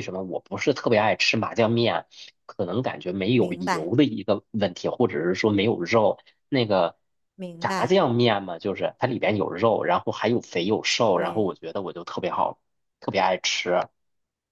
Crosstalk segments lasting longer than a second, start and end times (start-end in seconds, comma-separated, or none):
none